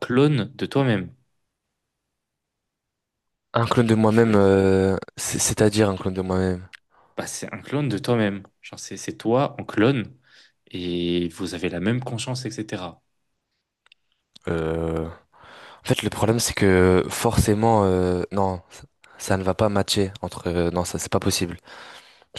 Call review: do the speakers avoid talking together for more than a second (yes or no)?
yes